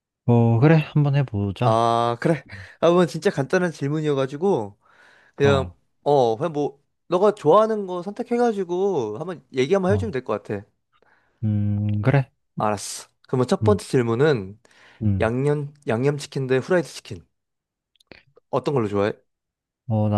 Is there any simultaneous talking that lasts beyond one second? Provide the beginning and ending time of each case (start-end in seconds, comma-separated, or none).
none